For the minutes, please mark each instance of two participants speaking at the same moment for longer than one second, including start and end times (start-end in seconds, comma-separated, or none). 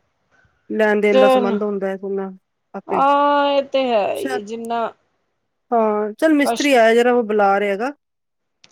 none